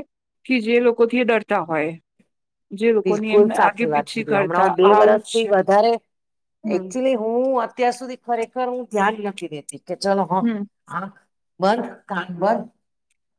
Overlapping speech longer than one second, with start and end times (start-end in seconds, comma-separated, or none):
3.1-5.5